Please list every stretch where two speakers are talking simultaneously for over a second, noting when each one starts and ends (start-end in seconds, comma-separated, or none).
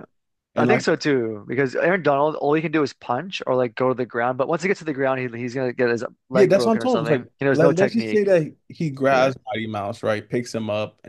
6.3-8.2